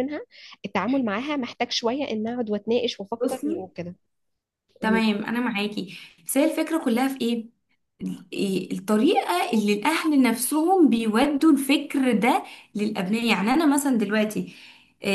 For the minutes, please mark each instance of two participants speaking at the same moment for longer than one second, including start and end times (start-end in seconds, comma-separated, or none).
none